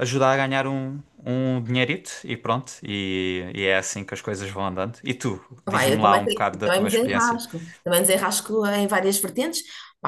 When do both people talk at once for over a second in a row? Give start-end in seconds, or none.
5.7-7.4